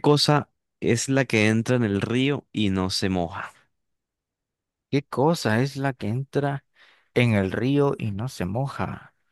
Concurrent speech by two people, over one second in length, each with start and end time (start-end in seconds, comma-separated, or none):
none